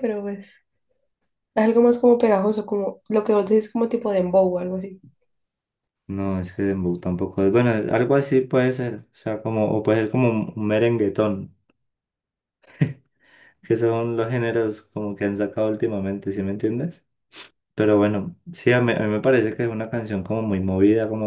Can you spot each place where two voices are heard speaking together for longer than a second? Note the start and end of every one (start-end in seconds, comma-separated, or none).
none